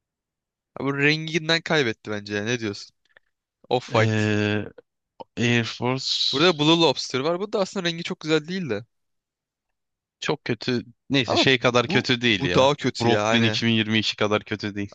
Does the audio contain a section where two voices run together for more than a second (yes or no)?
yes